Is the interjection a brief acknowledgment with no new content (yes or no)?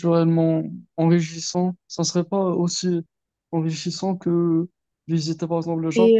no